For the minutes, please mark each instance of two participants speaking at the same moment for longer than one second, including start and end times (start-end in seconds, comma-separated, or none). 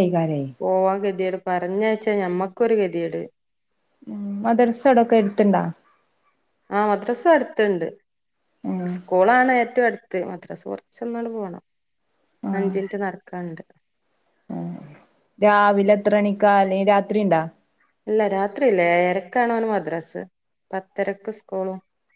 none